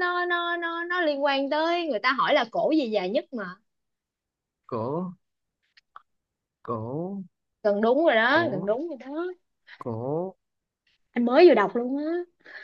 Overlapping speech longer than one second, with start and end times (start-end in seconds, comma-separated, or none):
none